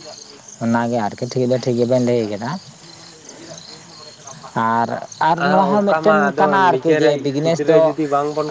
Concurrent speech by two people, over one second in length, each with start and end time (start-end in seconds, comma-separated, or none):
5.5-7.8